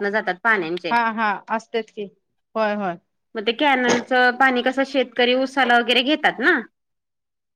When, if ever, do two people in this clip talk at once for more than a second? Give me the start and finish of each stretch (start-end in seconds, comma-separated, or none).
none